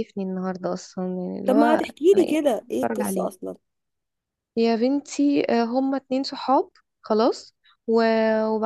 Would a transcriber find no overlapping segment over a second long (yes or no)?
no